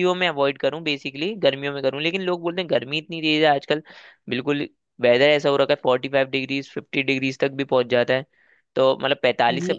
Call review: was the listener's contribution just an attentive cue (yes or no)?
yes